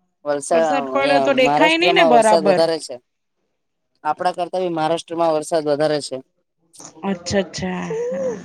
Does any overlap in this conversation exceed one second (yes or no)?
yes